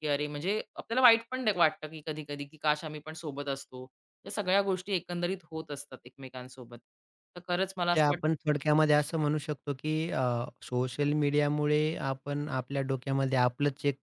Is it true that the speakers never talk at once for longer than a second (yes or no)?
yes